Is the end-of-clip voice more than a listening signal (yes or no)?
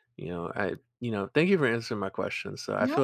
no